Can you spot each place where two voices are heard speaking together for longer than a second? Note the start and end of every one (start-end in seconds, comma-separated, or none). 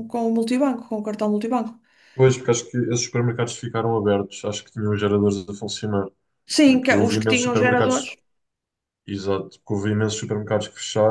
6.6-8.1